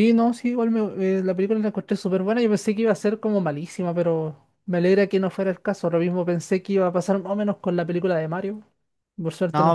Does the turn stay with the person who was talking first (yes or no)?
no